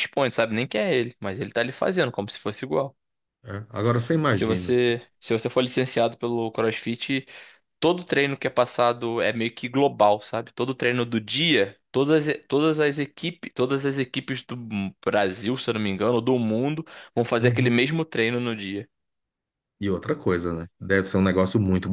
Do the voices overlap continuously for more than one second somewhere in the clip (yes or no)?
no